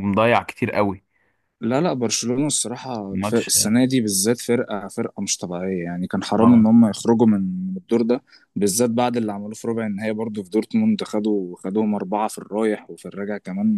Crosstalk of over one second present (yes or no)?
no